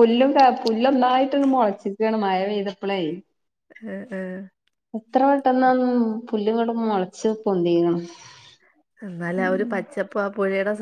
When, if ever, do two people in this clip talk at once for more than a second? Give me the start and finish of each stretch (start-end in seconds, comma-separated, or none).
none